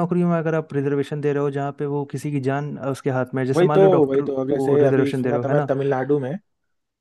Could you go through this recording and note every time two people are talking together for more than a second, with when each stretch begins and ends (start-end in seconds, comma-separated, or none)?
3.6-5.7